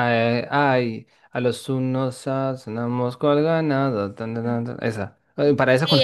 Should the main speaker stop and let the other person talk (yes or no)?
yes